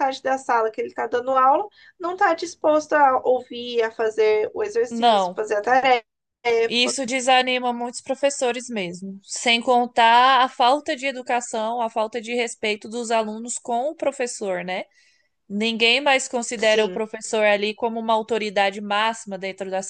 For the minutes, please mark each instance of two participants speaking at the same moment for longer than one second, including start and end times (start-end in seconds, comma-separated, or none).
none